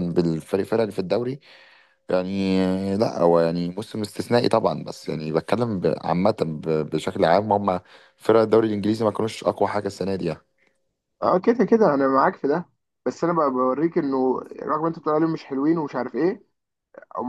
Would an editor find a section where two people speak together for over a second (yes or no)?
no